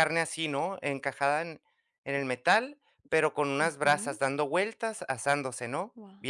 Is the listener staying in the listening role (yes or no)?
no